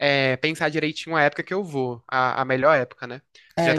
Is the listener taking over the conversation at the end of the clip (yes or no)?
yes